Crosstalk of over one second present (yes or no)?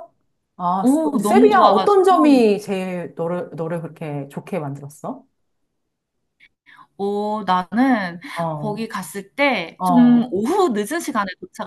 yes